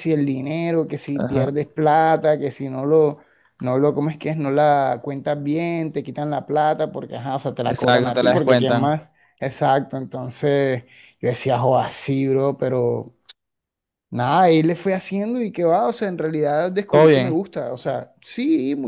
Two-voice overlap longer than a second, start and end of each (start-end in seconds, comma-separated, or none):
7.6-9.0